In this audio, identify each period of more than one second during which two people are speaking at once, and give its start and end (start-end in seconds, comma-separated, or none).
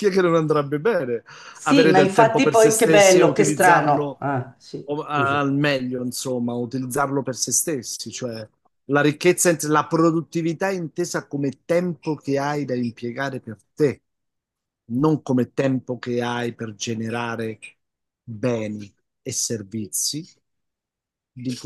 1.6-4.2